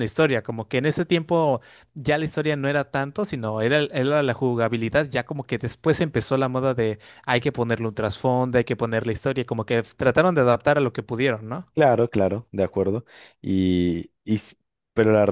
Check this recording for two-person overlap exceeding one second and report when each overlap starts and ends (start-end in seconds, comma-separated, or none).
none